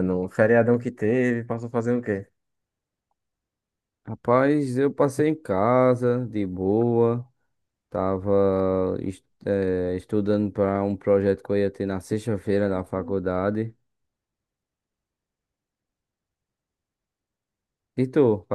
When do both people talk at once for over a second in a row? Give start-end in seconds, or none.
none